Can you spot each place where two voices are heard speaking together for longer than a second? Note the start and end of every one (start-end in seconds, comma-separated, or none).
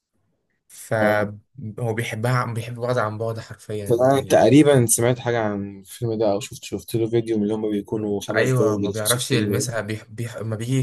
8.3-9.7